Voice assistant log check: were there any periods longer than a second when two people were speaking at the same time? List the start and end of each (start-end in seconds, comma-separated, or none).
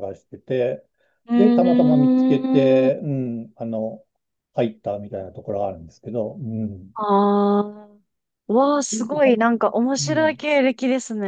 1.4-2.9